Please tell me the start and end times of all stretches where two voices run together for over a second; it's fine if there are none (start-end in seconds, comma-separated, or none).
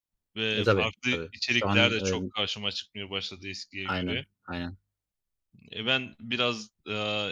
0.5-2.3